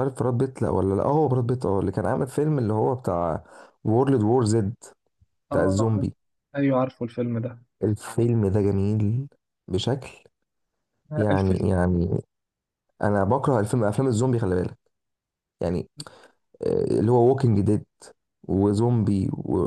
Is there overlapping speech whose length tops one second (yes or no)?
no